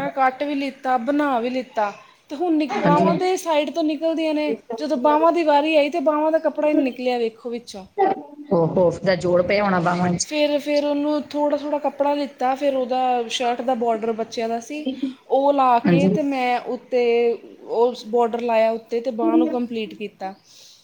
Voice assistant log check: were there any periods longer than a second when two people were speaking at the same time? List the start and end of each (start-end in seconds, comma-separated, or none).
none